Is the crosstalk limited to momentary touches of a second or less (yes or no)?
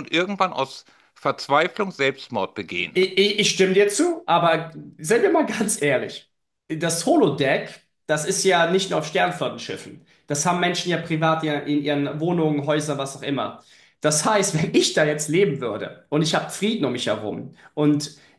yes